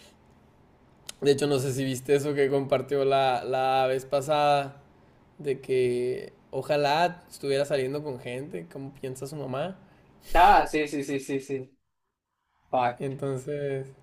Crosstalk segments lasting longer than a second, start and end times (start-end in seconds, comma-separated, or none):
none